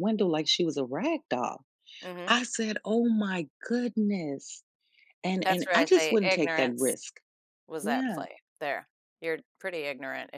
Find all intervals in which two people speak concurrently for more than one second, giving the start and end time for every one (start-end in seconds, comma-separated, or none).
5.4-6.9